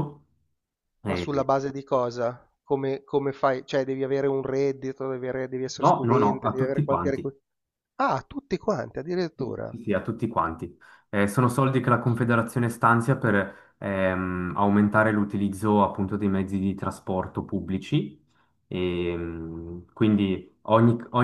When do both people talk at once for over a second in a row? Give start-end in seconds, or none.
5.8-7.3